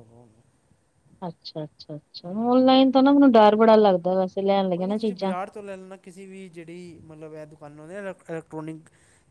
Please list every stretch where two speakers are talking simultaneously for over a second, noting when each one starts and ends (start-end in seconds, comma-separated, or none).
none